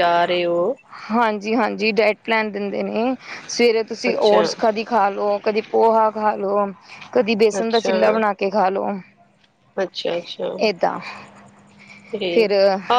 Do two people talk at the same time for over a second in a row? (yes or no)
no